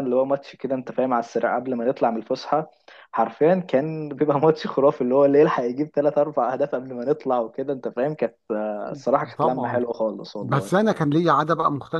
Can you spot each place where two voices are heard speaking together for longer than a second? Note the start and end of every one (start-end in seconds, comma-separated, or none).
none